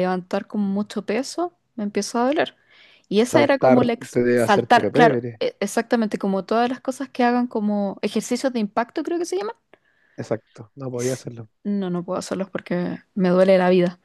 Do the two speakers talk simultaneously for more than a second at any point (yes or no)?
yes